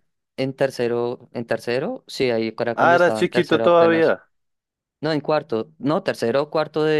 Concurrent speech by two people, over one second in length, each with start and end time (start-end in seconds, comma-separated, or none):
2.7-4.2